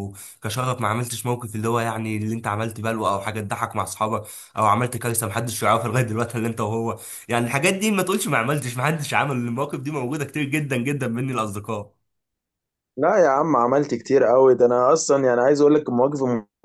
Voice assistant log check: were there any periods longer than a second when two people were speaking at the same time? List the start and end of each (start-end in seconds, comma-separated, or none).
none